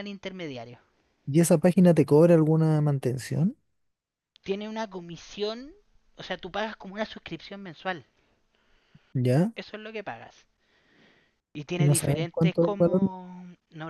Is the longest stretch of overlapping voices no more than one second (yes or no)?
no